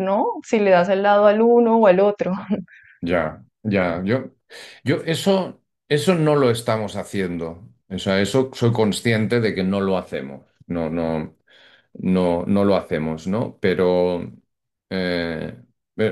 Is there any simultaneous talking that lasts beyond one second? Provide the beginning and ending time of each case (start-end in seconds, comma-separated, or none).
none